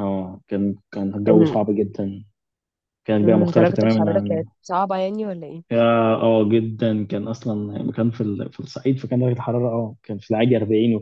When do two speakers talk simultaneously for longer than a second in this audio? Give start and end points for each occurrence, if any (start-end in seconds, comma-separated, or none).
3.2-4.4